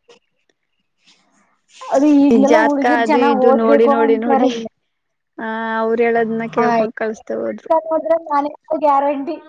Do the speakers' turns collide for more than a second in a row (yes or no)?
yes